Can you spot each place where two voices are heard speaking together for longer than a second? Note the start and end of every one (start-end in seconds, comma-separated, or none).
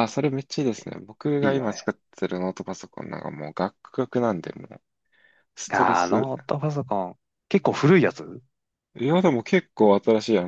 none